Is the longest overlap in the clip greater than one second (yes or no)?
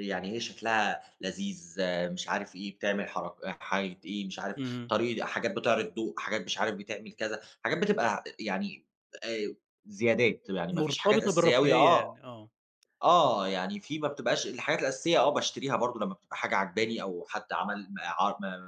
yes